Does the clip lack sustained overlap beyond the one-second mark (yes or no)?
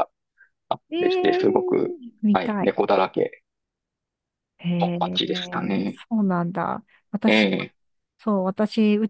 yes